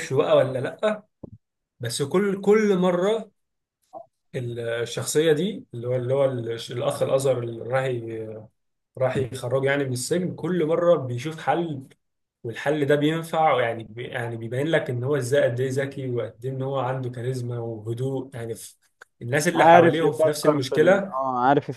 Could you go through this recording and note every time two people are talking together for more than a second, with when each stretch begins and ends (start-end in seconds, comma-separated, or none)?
19.5-21.2